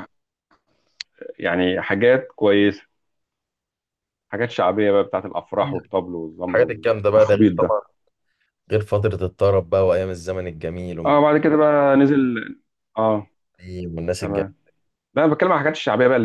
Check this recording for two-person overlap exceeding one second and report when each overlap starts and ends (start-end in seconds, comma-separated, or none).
6.5-7.8